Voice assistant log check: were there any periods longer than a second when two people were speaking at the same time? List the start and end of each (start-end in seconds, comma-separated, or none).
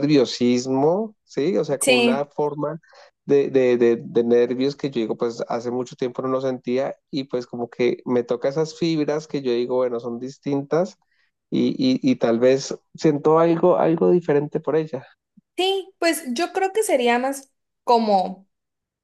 none